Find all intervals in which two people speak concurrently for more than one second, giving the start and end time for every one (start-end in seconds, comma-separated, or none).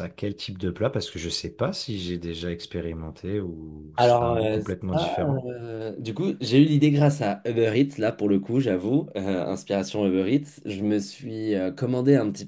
4.0-5.5